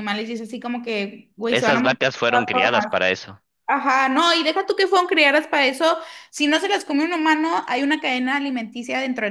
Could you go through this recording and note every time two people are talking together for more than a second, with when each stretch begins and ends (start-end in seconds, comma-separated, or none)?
1.5-3.1